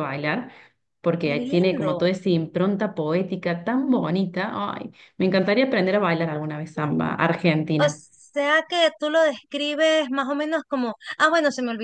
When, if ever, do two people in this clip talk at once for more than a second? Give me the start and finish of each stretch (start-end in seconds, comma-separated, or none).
none